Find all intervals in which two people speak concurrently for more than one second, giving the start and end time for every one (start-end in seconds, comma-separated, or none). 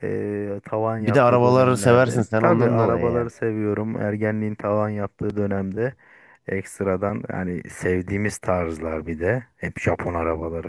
1.0-3.3